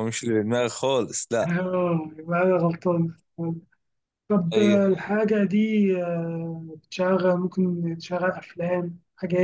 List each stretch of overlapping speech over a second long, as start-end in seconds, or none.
none